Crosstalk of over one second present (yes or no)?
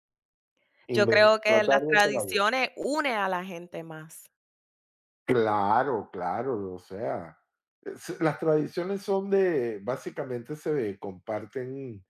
yes